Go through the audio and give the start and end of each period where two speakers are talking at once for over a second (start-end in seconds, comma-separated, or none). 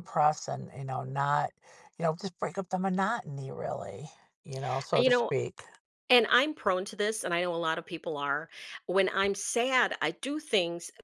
none